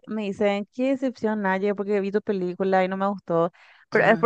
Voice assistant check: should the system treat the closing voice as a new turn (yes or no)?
no